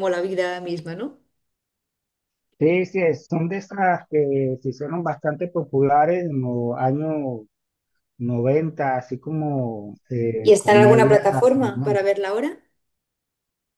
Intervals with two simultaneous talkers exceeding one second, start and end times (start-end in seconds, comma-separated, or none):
10.4-12.1